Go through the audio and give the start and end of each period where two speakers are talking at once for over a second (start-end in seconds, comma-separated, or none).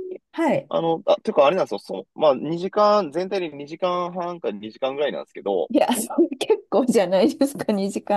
none